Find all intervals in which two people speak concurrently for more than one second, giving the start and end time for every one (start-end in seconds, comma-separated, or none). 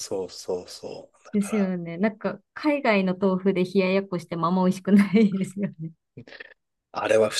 none